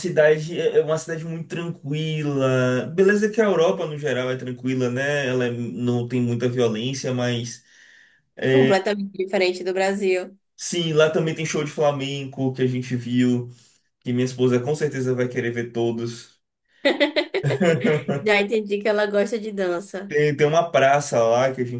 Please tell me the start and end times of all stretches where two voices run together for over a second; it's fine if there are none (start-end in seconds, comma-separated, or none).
none